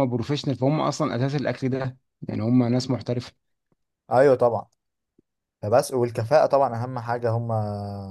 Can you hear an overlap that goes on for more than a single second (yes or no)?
no